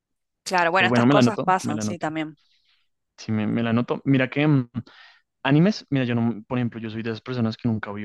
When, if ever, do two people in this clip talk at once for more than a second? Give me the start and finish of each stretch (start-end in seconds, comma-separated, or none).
0.8-2.0